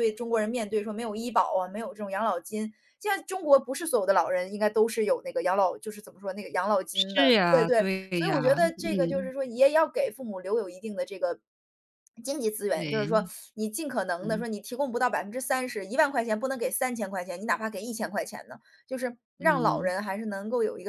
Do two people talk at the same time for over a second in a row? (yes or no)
yes